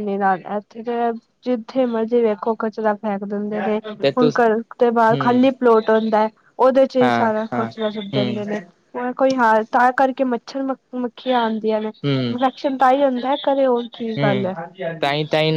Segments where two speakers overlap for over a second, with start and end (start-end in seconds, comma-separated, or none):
7.0-8.4